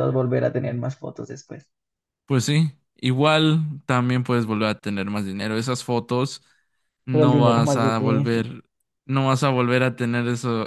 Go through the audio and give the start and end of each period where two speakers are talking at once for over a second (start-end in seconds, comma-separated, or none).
7.1-8.4